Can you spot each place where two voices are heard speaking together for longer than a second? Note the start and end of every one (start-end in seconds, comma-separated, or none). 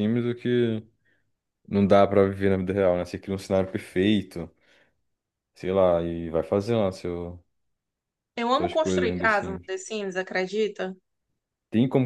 8.5-9.7